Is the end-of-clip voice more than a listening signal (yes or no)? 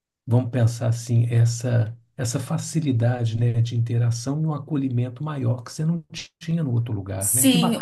yes